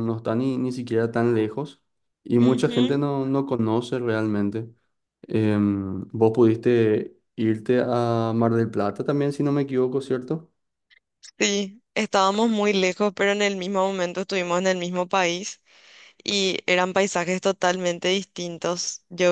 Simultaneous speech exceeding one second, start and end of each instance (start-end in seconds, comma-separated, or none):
none